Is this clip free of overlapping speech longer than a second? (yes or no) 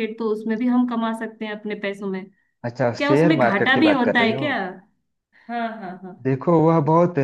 no